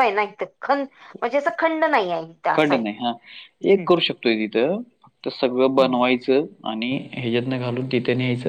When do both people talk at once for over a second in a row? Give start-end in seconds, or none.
none